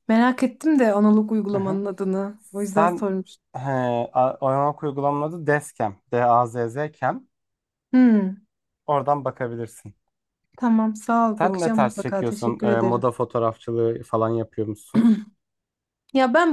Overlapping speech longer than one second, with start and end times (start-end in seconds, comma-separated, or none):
11.4-13.1